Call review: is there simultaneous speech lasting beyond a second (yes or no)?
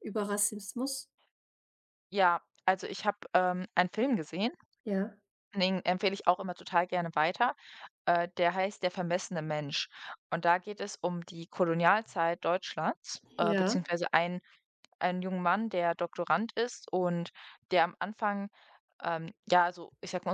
no